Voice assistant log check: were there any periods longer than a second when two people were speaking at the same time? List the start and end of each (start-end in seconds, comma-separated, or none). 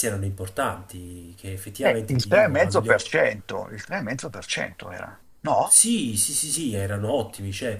1.9-3.1